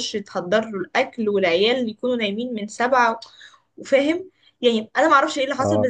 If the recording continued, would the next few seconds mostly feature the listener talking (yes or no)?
no